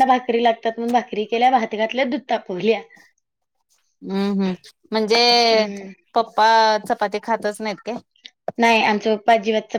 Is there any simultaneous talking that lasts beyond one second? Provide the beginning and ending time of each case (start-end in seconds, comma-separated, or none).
none